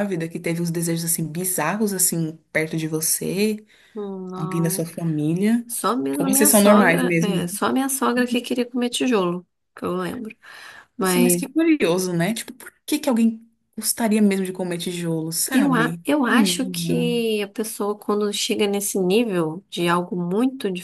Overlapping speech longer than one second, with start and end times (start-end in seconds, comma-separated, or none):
6.2-7.5, 15.5-17.1